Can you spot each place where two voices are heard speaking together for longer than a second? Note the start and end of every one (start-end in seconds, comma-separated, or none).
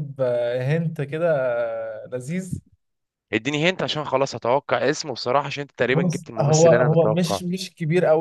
5.9-7.4